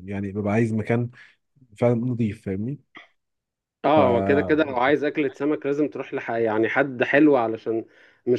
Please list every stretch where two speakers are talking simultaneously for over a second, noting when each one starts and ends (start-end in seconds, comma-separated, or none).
none